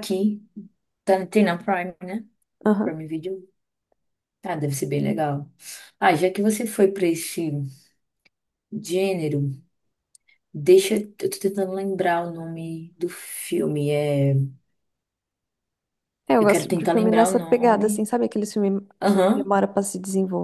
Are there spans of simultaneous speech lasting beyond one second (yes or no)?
yes